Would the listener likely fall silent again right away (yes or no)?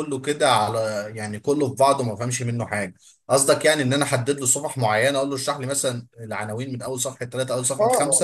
no